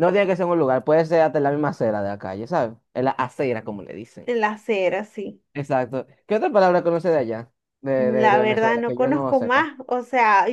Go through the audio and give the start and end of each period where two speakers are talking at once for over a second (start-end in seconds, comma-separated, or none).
8.0-9.7